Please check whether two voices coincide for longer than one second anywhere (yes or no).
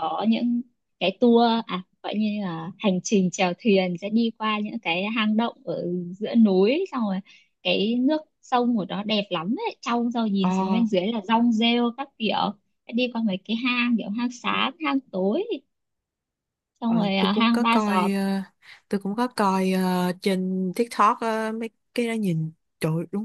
yes